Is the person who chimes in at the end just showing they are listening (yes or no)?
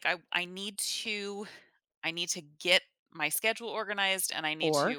yes